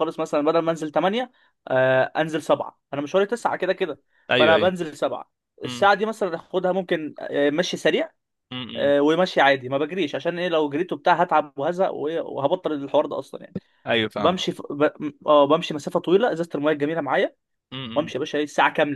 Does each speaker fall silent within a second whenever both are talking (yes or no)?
yes